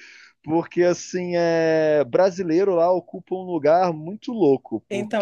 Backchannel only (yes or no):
no